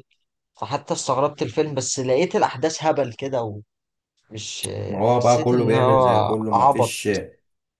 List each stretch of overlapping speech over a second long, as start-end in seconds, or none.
5.1-7.0